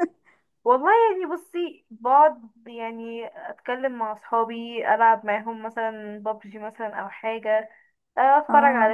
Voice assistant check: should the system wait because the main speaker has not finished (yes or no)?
yes